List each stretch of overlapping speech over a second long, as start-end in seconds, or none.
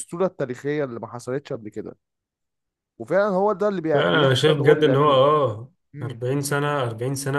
3.9-5.2